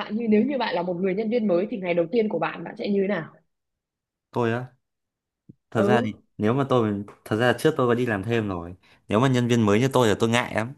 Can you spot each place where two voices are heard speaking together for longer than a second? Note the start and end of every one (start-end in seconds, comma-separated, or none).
none